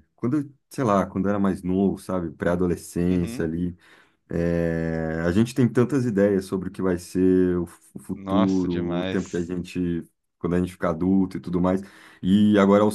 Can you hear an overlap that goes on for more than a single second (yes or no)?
yes